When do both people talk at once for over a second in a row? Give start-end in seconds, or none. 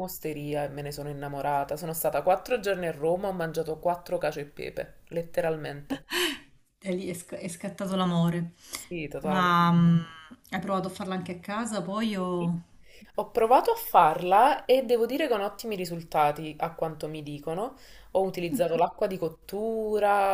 none